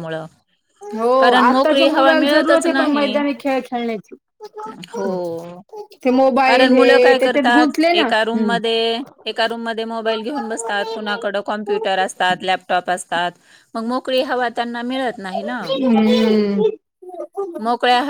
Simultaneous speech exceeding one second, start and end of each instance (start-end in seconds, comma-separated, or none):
1.2-3.2, 6.4-8.6